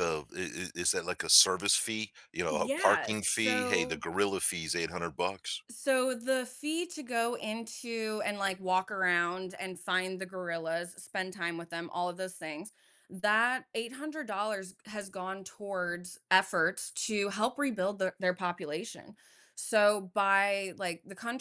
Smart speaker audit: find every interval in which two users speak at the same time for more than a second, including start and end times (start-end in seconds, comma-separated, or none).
2.5-4.0